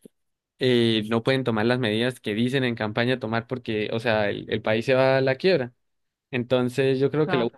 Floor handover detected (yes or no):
no